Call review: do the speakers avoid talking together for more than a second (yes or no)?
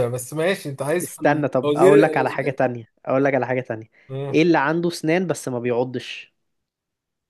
no